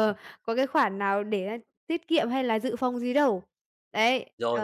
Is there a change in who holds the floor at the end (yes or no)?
yes